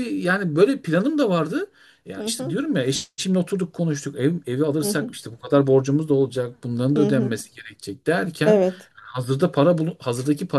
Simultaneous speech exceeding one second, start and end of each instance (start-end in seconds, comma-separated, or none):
none